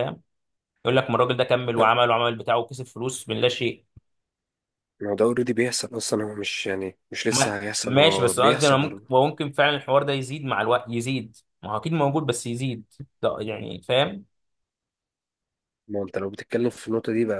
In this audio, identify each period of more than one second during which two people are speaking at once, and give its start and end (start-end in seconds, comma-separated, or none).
7.3-9.2